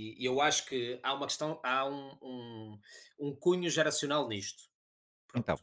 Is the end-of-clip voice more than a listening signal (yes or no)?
no